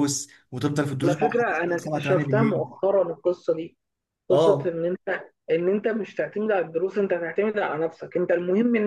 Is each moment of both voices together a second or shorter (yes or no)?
no